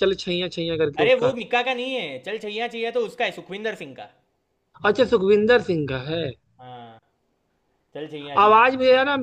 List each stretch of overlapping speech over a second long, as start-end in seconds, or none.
none